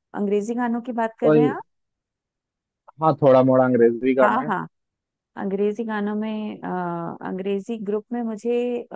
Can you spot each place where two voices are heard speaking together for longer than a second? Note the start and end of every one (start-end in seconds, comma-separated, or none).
none